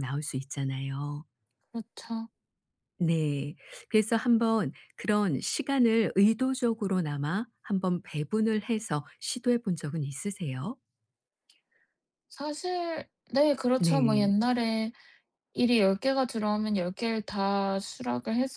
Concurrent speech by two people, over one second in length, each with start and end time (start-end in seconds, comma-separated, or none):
none